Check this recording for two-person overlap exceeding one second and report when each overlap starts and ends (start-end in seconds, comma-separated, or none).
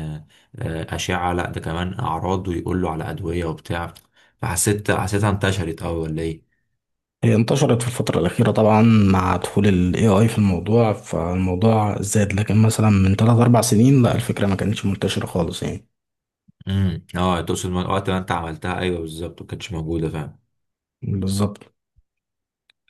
none